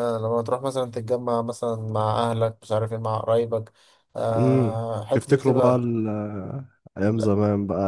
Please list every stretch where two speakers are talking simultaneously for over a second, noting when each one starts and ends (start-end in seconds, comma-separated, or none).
4.4-5.9